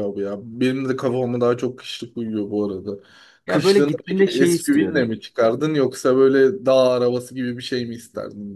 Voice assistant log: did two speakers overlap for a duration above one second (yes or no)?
yes